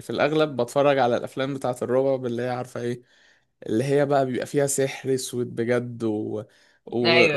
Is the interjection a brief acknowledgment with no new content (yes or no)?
yes